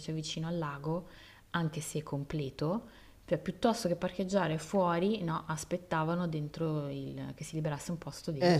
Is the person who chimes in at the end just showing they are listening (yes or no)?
no